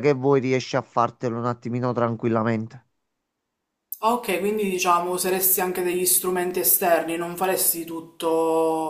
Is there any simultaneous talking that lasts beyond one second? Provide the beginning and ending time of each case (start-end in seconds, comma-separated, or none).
none